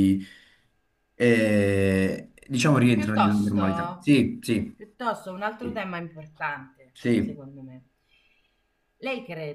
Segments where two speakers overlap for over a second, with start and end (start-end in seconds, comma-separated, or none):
2.9-4.1